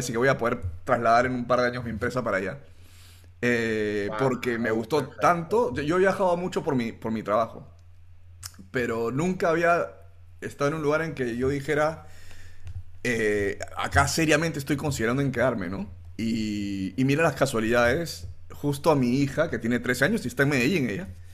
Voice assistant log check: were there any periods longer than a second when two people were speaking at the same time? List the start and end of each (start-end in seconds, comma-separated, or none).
4.0-5.6